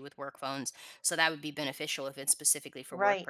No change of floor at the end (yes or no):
no